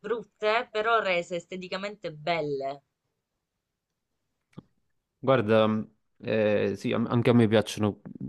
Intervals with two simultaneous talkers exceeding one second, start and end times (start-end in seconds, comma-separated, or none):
none